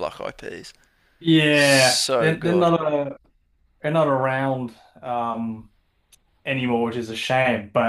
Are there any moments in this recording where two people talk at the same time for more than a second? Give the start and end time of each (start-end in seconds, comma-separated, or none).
1.5-2.7